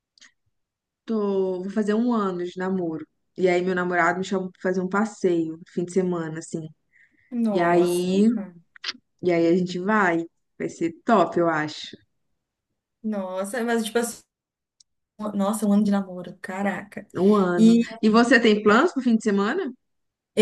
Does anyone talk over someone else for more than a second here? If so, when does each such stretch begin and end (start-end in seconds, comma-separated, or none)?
none